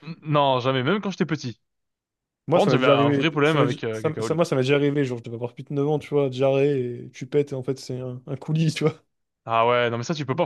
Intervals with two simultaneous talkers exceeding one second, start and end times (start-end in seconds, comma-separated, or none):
2.5-4.4